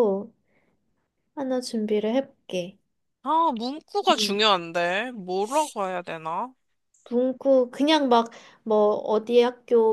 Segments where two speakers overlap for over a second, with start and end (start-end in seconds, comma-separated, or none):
none